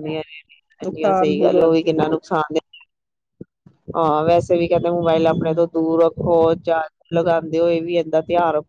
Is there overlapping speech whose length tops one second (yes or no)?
yes